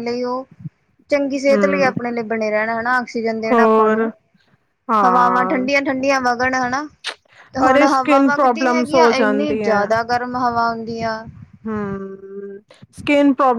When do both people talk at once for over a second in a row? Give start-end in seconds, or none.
7.7-9.6